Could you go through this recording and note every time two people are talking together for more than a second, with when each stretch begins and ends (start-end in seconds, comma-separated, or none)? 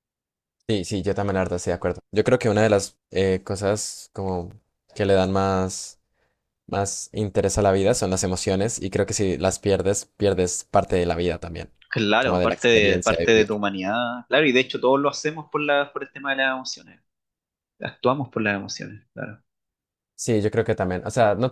12.2-13.5